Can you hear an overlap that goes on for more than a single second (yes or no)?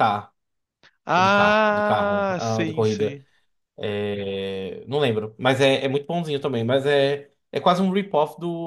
yes